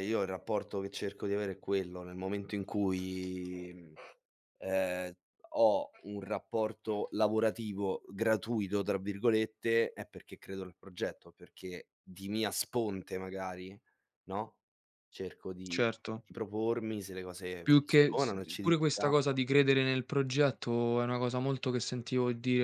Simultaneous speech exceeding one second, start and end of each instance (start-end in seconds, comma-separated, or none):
17.6-19.1